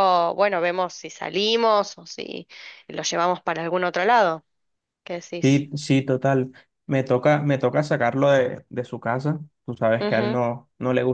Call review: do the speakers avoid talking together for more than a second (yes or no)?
yes